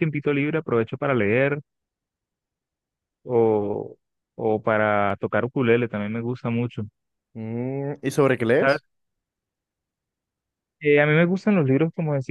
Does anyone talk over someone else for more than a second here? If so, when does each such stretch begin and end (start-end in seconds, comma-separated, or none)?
none